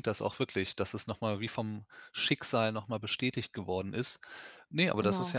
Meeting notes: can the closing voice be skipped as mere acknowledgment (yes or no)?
yes